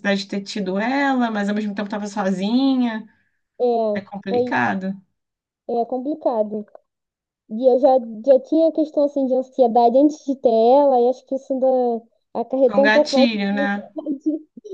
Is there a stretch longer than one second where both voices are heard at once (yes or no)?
yes